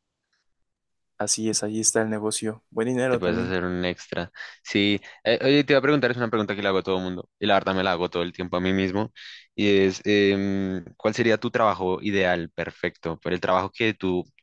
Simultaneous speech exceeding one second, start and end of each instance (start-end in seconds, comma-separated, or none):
none